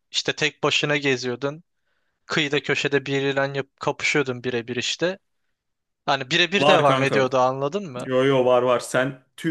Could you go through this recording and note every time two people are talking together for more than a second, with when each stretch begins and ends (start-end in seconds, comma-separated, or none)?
none